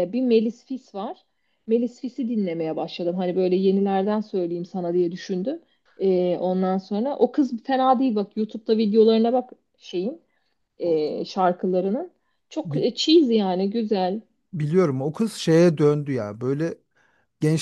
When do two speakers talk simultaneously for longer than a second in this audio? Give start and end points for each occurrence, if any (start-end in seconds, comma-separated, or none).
none